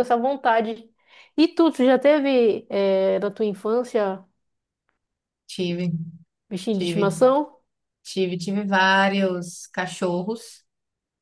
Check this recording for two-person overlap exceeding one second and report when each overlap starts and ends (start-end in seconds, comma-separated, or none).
none